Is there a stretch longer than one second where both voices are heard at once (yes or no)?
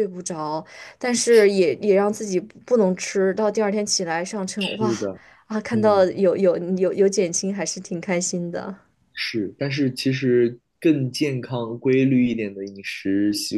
no